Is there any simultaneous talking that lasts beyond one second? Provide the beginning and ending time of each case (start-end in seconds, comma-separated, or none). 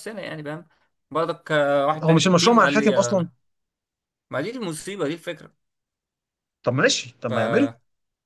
2.0-3.3